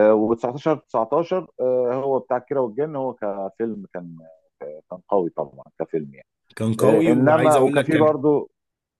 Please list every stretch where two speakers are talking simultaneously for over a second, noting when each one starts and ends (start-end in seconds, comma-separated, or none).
6.8-8.2